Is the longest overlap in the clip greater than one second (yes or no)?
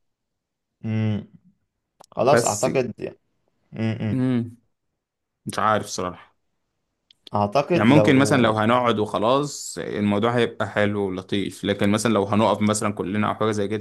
no